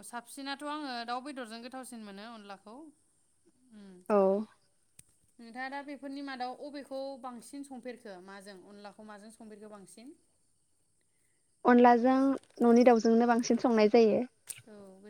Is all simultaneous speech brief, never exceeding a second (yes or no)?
yes